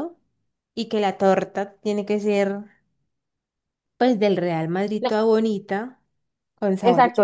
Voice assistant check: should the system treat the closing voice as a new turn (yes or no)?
yes